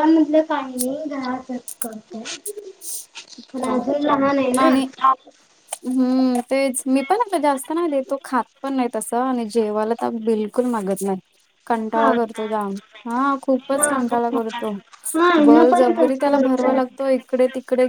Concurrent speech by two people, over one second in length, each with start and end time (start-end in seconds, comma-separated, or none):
15.4-16.8